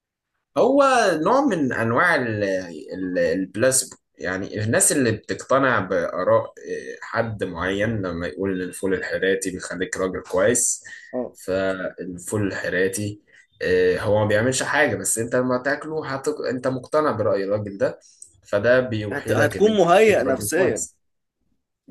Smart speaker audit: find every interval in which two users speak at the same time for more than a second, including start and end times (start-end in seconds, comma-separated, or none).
19.1-20.9